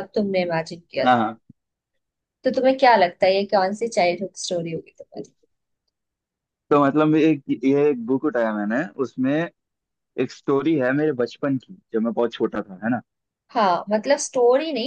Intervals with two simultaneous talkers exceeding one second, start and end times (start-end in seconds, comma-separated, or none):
none